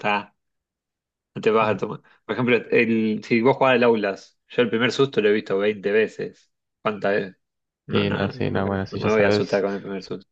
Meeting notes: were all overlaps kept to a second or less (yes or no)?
no